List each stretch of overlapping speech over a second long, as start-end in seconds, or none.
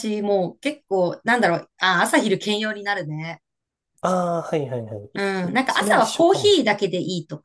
5.4-6.8